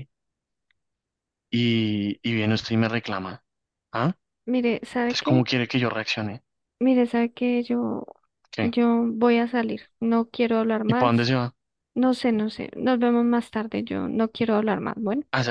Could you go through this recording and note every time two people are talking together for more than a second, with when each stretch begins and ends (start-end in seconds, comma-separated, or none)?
none